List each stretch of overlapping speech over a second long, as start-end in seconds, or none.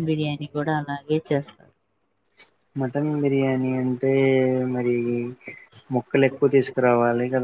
none